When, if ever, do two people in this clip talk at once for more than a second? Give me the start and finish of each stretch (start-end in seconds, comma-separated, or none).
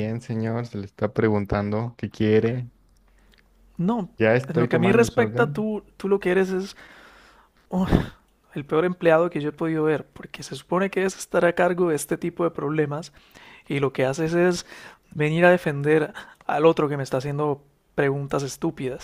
4.5-5.7